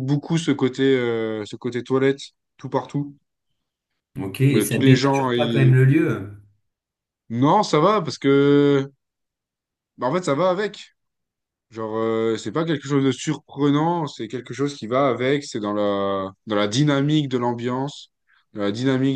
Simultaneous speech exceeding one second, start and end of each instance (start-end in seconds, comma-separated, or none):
4.5-5.7